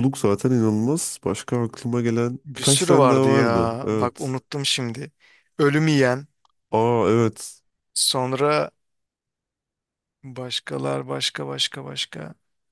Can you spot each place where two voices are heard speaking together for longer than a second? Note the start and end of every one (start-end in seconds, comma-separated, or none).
2.5-4.3